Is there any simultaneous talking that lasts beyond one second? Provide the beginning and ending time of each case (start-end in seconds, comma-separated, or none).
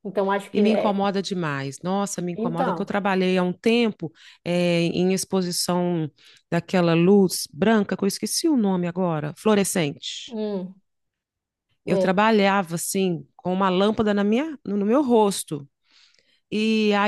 none